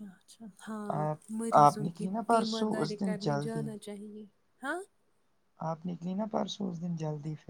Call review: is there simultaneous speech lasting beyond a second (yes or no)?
yes